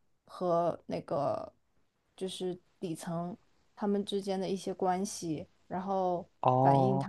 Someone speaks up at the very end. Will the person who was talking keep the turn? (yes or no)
yes